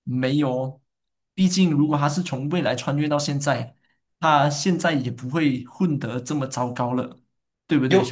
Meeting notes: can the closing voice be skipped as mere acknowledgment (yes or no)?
no